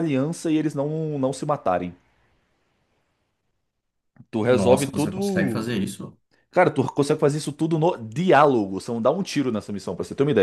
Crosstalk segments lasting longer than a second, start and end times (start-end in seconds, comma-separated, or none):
4.5-5.8